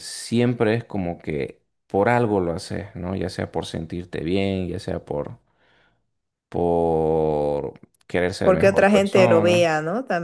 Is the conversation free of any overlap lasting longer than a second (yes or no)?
no